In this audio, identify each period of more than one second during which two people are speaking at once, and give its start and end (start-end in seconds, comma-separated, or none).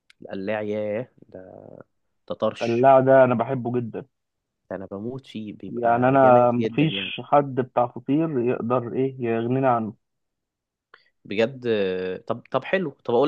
5.7-7.1